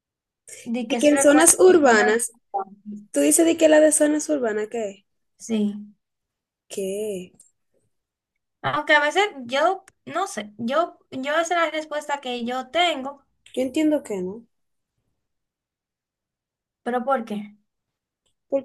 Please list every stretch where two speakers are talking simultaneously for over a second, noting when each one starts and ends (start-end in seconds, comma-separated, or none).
0.8-2.1